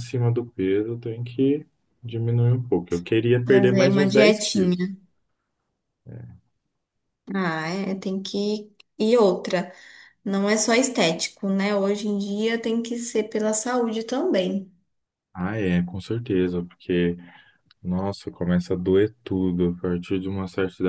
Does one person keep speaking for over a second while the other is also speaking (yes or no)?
yes